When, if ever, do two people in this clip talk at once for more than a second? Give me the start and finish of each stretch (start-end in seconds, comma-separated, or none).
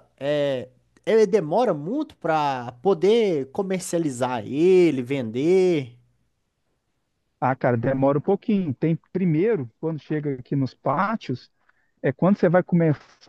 none